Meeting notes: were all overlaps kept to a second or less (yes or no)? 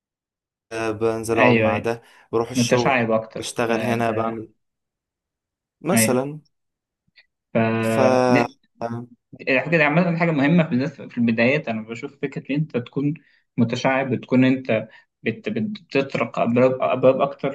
no